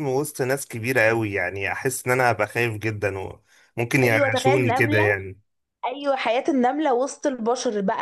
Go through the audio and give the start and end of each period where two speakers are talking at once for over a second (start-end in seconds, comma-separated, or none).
4.0-5.2